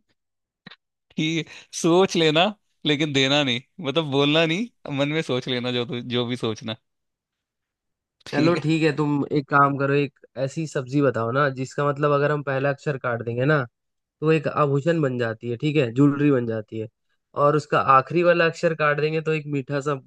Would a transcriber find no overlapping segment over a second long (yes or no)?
yes